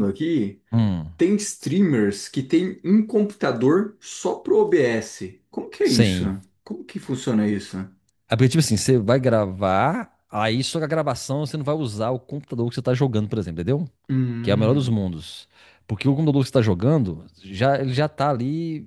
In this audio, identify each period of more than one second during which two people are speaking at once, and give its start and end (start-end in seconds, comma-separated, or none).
none